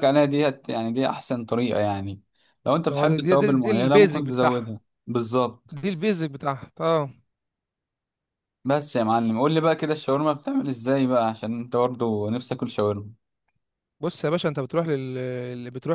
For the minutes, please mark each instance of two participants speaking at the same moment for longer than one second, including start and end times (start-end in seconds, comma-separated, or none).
2.9-4.7